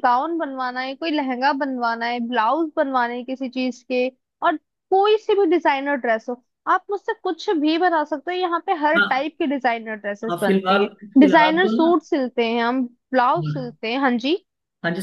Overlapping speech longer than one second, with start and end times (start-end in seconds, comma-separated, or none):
10.3-11.9